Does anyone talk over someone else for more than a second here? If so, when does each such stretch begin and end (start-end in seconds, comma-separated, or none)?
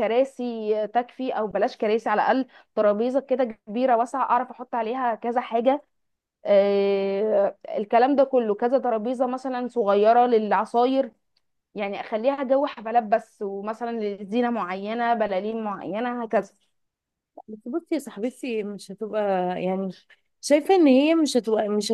none